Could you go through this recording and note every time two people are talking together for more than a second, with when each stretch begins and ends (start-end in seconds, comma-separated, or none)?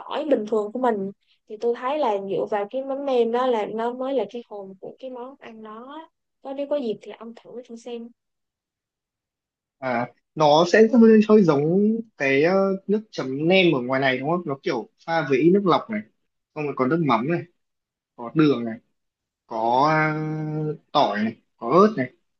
none